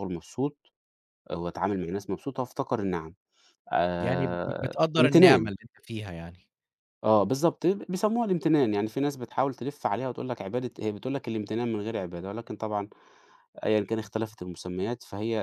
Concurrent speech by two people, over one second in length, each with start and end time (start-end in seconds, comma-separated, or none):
4.0-5.5